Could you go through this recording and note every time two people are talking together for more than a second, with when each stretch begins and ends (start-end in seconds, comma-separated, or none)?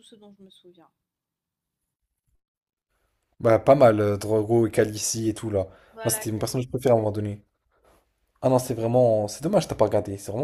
none